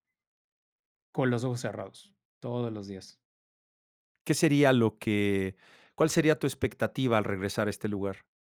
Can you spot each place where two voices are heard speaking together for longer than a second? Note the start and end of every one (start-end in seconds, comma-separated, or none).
none